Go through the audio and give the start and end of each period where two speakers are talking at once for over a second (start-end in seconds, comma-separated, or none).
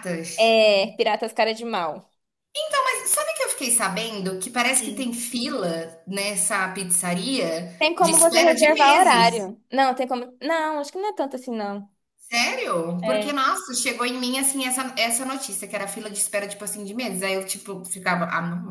7.8-9.5